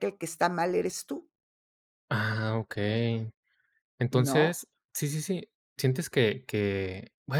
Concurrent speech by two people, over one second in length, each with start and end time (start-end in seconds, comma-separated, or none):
none